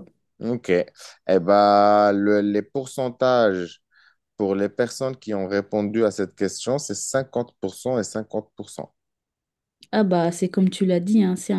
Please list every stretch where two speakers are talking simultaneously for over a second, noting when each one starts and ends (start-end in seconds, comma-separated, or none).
none